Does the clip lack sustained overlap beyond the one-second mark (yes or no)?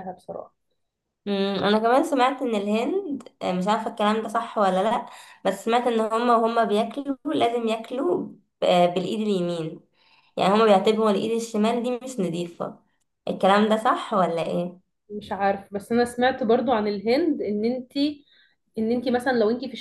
yes